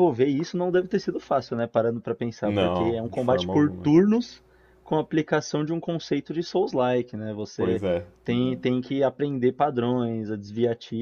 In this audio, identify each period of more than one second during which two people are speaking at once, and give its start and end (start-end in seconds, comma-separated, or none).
2.4-3.9